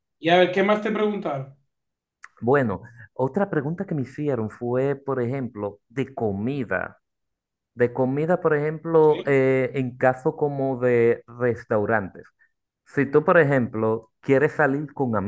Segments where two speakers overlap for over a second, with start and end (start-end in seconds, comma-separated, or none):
none